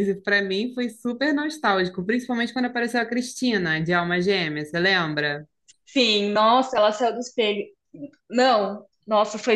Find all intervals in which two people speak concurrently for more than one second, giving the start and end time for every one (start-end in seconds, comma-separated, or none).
none